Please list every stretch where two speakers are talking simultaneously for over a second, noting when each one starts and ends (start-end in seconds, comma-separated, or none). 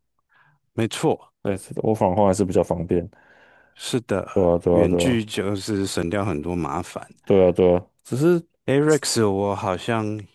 none